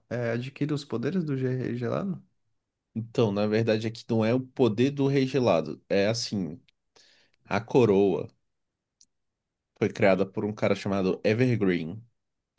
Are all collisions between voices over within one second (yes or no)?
yes